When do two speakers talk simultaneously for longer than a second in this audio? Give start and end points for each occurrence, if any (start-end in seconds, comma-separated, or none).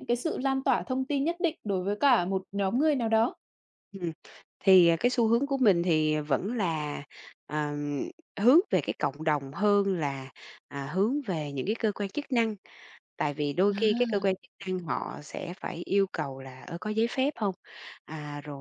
none